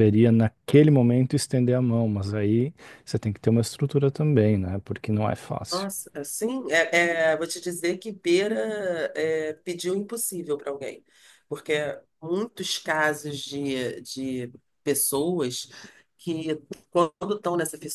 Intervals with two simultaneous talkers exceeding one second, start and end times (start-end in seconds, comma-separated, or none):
none